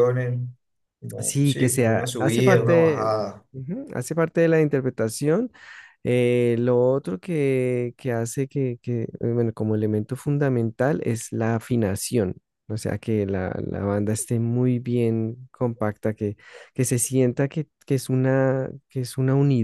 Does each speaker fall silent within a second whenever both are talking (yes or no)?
no